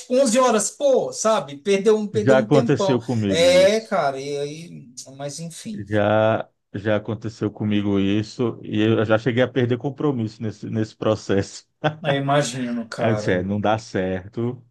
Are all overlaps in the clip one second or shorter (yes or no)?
no